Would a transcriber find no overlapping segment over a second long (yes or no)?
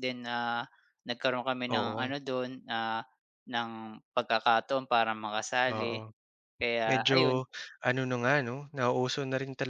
yes